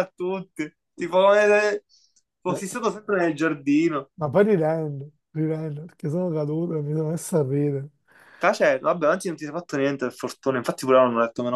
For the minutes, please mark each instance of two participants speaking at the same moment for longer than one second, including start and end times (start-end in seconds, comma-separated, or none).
none